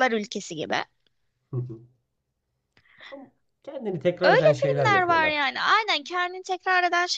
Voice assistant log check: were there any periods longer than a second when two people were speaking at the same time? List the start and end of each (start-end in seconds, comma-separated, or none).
4.2-5.5